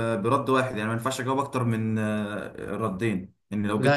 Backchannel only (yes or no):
yes